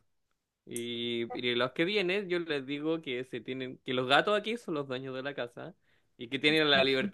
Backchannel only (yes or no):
yes